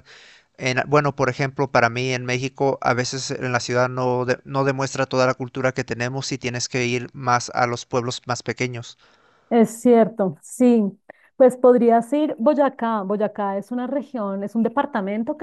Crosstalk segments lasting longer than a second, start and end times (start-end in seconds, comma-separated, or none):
none